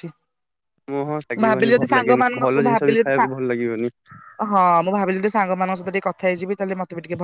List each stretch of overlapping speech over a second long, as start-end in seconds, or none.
1.4-3.2